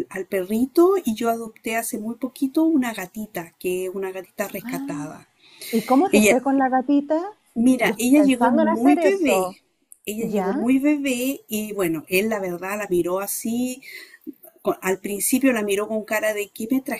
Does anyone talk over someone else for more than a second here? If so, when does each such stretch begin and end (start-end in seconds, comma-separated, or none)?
7.8-9.5